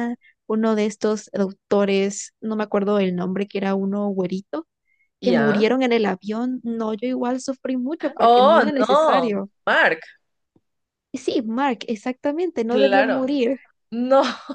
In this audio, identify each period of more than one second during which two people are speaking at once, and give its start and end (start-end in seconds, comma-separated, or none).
8.2-9.5